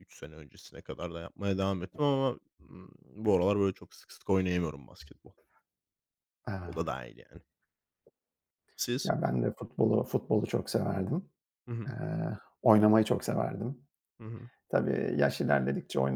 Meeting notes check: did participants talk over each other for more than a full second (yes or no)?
no